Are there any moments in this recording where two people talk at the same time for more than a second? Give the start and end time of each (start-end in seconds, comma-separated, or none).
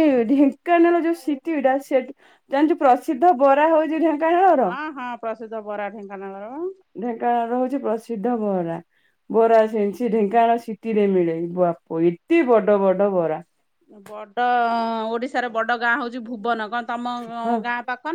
none